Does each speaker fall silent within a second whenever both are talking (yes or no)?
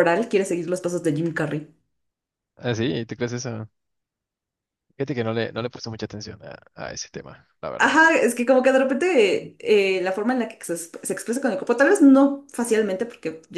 yes